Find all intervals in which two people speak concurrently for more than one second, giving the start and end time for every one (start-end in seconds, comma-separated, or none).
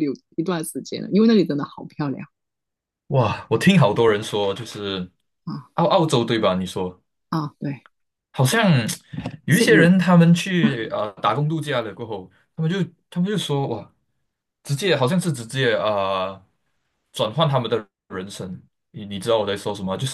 none